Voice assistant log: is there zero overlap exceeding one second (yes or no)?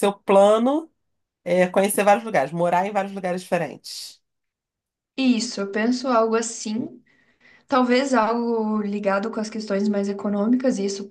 yes